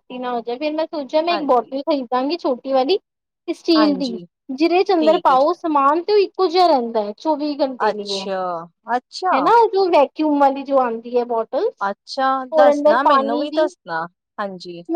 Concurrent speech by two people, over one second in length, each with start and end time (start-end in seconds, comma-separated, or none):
none